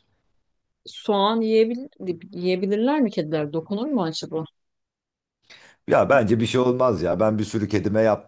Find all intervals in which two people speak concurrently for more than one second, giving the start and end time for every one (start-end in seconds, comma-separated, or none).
none